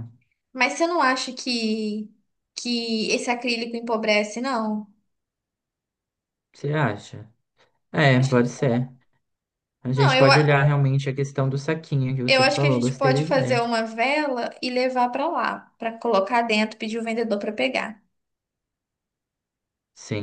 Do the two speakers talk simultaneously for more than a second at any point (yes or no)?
yes